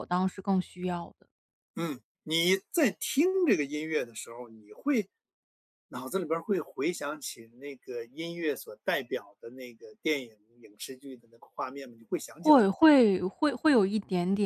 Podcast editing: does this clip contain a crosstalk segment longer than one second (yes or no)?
no